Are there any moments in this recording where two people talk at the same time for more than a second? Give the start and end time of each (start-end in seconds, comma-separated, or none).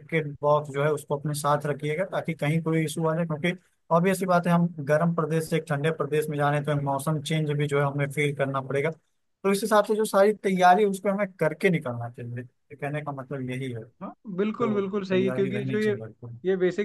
14.4-15.9